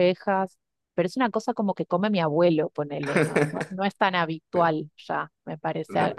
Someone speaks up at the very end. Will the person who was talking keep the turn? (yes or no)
yes